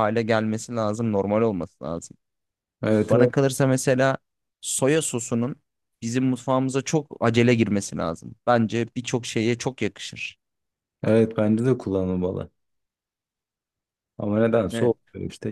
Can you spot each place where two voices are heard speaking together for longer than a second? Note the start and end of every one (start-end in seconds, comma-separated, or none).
none